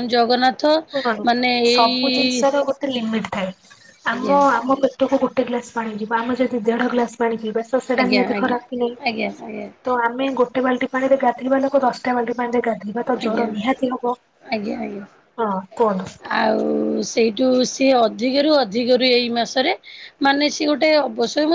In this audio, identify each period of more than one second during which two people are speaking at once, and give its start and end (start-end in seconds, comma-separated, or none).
0.7-2.4